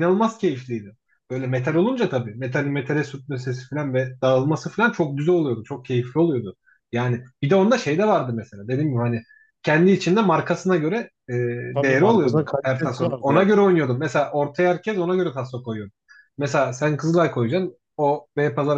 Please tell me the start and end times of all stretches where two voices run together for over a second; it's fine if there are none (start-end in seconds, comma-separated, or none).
11.8-13.5